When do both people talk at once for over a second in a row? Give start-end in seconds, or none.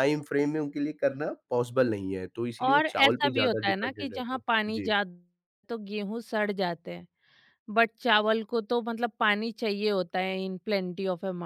2.6-4.9